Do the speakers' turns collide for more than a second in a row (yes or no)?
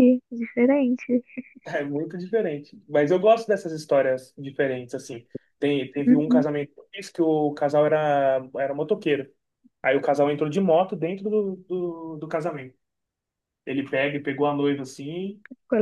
no